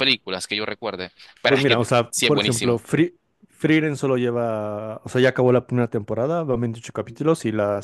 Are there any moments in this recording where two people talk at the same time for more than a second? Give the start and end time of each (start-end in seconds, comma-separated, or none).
1.5-2.8